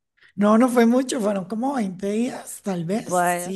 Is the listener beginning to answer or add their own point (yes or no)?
no